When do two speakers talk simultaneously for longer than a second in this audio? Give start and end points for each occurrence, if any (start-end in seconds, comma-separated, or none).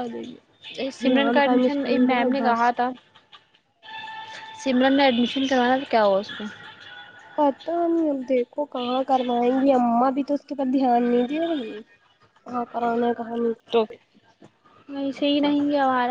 1.0-2.6